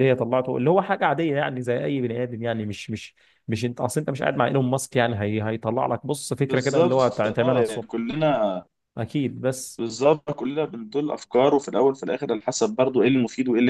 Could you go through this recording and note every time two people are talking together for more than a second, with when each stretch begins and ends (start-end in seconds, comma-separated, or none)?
6.5-8.0